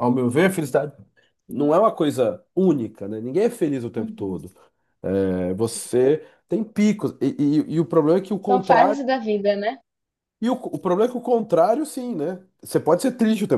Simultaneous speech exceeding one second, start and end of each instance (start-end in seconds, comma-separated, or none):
none